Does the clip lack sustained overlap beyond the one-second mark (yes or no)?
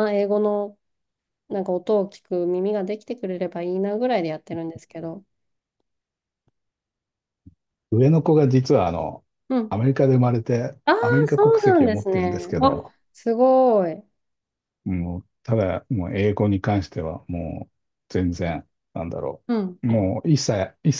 no